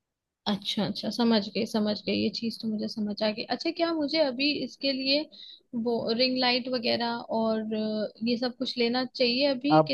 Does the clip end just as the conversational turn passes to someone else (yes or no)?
yes